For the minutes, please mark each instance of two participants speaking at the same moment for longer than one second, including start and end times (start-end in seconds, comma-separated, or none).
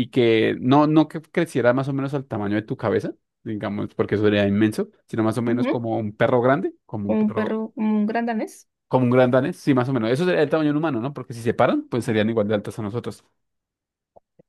none